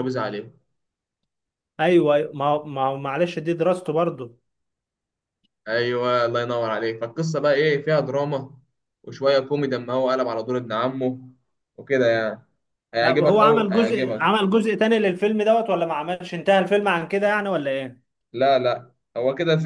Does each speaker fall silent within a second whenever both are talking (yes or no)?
no